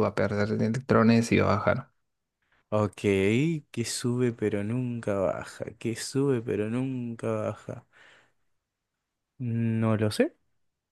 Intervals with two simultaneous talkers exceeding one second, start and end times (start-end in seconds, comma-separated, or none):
none